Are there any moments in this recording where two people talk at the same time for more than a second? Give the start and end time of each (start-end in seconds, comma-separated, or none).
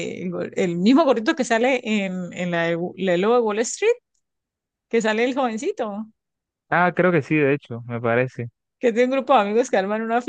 none